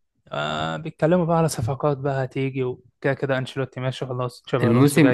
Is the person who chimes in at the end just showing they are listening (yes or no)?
no